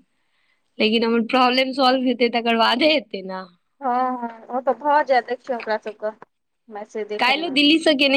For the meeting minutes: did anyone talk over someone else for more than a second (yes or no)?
no